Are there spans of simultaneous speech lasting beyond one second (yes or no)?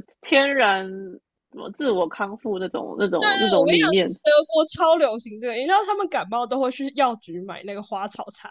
no